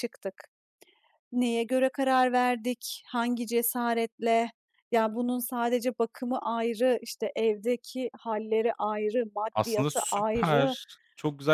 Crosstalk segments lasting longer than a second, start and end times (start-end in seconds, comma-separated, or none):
9.5-10.8